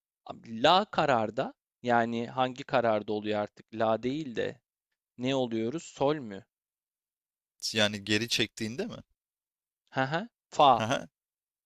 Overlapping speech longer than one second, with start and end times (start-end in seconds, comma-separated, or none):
none